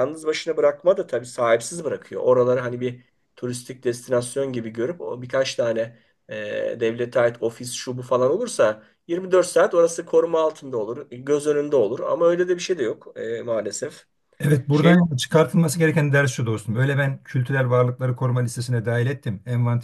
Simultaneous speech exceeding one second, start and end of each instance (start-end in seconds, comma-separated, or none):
none